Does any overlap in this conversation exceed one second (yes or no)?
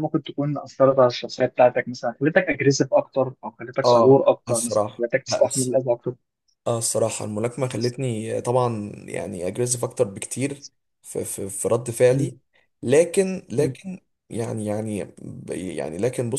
yes